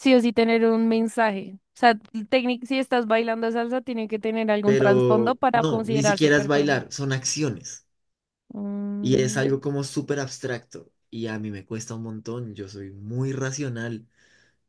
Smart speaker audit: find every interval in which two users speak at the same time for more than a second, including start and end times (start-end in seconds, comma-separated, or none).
4.6-6.9